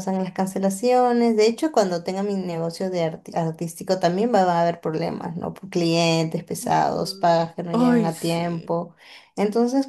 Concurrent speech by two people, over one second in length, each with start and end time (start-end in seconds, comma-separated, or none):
6.6-8.7